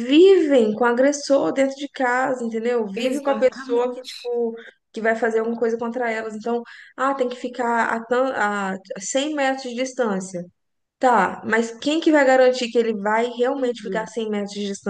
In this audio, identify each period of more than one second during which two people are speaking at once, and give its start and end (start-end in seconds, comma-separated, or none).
3.0-4.2